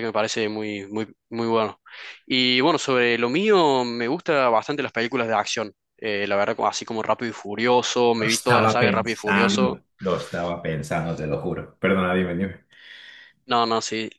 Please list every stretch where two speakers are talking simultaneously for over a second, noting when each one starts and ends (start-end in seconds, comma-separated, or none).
8.2-9.8